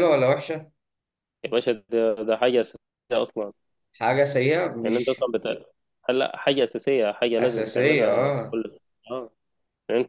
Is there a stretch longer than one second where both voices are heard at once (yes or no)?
yes